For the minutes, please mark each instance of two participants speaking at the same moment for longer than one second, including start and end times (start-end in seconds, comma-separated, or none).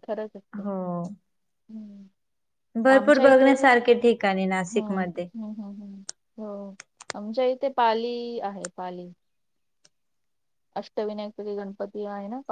none